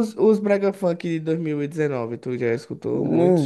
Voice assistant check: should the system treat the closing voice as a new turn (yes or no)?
yes